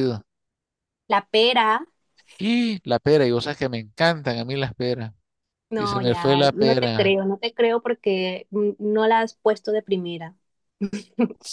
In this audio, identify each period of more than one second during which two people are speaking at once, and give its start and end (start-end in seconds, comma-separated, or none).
5.8-7.2